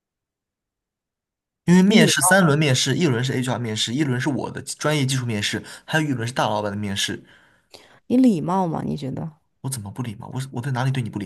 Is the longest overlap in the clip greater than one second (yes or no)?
no